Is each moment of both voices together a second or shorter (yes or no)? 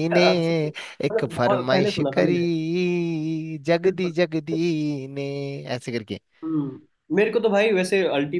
no